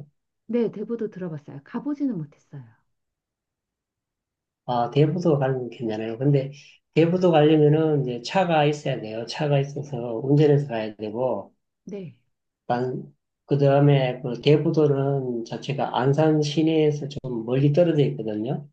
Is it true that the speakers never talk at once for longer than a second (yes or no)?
yes